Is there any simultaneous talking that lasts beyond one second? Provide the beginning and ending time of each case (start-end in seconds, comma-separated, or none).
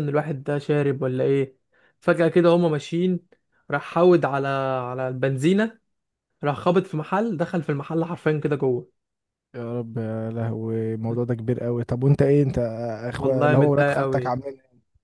13.2-14.4